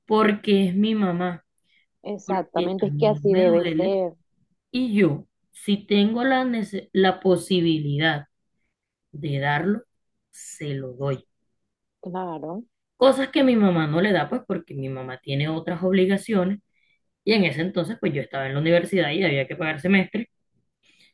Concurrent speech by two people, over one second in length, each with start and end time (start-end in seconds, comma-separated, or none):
2.2-4.0